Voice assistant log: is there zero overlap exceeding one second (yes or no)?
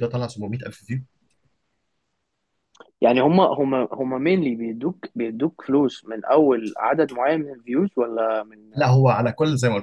yes